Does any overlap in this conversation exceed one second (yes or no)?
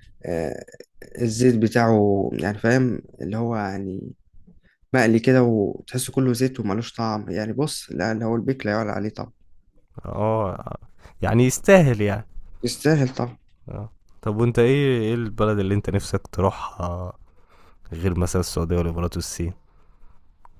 no